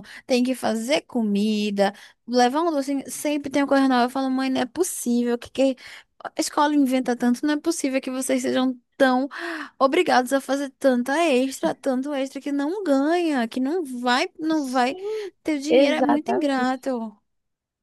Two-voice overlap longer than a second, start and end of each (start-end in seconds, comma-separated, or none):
15.7-16.9